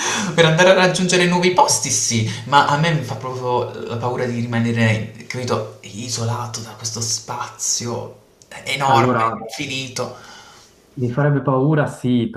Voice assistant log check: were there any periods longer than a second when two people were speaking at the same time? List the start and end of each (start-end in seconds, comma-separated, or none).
none